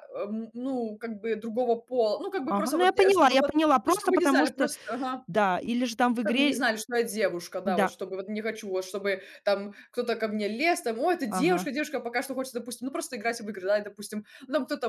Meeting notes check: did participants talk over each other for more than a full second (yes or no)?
yes